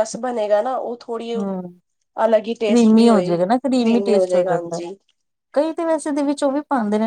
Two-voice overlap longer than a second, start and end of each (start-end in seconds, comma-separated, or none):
2.7-4.8